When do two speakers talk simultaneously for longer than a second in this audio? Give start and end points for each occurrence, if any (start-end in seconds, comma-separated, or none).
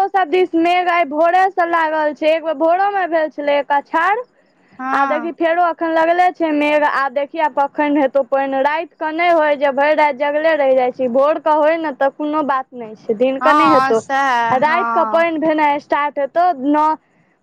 13.4-15.3